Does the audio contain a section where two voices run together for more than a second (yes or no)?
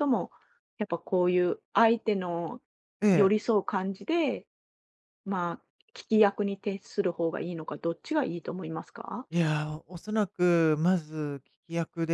no